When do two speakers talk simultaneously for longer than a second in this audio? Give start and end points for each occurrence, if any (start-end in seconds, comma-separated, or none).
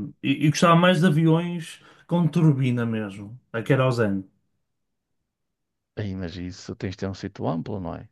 none